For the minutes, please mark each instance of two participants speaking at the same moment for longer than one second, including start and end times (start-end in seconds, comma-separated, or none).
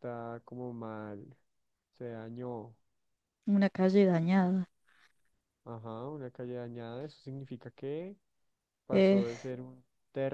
none